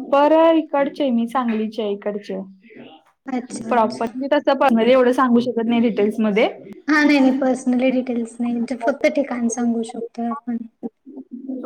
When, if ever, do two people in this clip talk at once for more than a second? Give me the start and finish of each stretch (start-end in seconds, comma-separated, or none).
none